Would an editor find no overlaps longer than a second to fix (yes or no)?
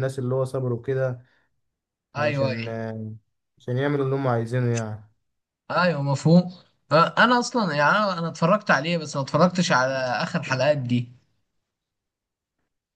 yes